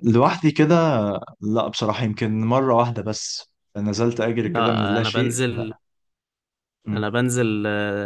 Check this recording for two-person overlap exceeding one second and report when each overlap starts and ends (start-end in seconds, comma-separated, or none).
4.4-5.7